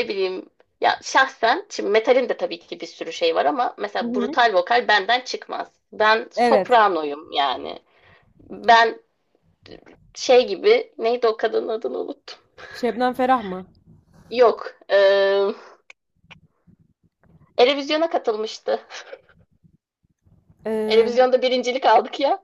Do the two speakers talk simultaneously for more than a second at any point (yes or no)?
no